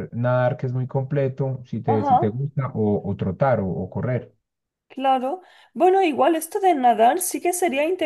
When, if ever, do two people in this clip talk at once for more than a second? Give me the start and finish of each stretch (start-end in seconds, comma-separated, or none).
none